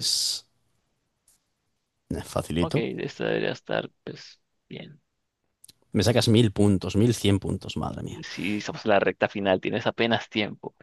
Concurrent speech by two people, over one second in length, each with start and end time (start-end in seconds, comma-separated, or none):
none